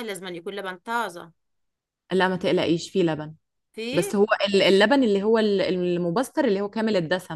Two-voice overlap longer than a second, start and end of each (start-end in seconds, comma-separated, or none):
none